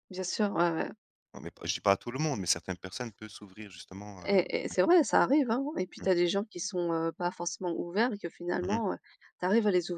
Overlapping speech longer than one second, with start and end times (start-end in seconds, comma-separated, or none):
none